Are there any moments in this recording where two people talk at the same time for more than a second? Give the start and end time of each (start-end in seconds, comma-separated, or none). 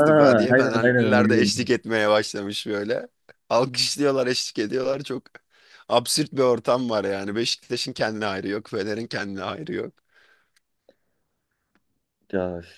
0.5-1.8